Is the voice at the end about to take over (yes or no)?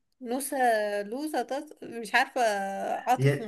yes